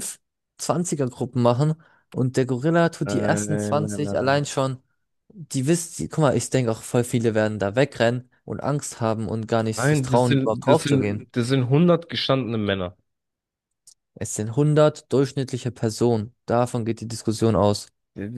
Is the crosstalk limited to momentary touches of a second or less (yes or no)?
no